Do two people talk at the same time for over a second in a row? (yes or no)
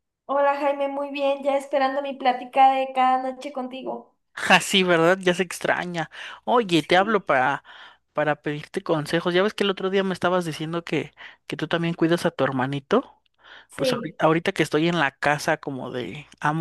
no